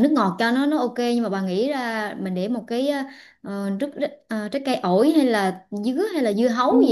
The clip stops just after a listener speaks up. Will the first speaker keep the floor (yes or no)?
no